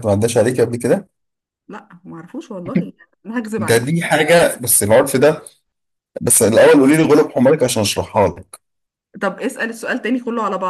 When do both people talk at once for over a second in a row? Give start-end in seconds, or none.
none